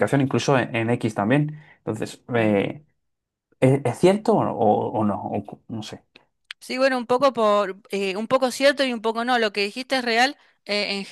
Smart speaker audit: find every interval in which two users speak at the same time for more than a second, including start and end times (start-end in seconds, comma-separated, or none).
none